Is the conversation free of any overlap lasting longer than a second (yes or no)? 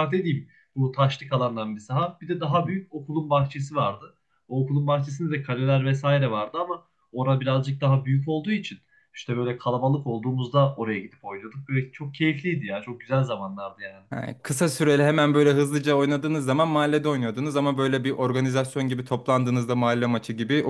yes